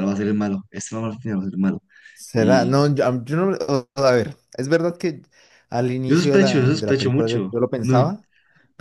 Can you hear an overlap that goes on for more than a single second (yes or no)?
yes